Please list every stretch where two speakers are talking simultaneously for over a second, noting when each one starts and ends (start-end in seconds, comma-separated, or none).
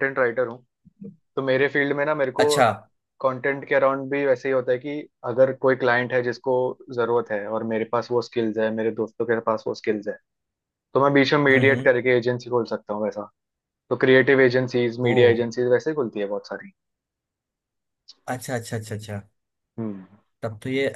none